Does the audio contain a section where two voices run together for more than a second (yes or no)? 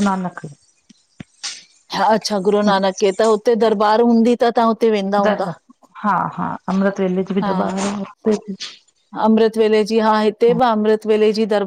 no